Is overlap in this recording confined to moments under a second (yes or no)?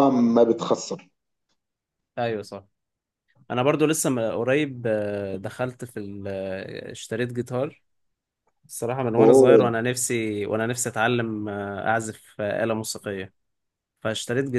yes